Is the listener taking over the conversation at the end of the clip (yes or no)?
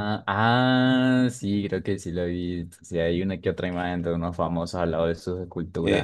yes